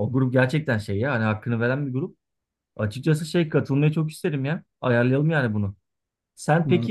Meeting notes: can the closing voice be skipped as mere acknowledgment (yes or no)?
yes